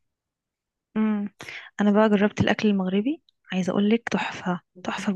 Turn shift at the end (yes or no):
yes